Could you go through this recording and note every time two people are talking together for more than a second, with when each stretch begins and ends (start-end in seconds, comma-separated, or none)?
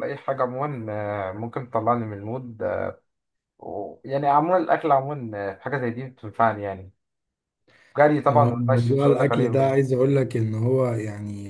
8.3-9.8